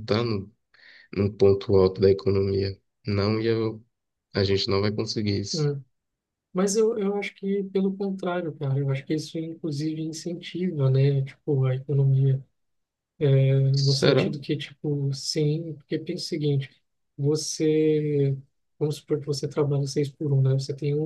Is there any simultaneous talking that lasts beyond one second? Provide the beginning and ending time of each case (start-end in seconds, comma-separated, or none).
none